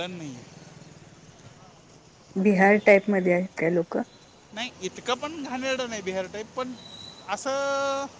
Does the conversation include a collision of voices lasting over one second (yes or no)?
no